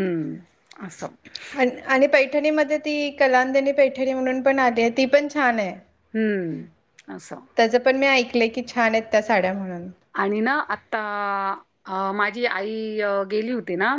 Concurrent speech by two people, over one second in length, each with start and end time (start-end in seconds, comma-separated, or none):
none